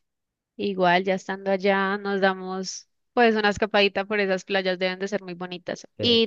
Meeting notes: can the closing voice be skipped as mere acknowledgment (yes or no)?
yes